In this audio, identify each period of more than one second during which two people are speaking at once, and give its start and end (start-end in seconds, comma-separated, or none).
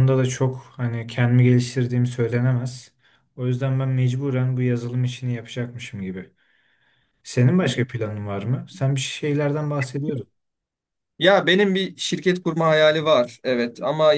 none